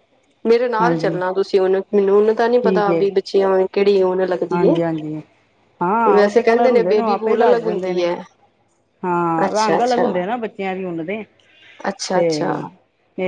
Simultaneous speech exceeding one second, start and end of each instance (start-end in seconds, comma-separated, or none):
6.1-8.1